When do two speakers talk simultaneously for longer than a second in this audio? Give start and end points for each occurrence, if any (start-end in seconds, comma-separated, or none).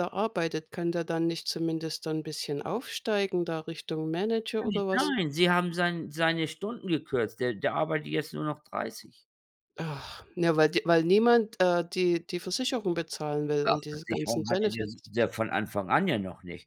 13.6-15.1